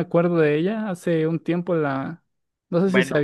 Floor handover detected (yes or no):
no